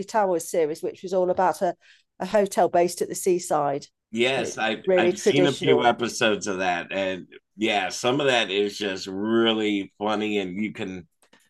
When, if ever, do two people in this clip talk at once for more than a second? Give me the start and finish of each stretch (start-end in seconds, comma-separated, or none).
4.3-6.0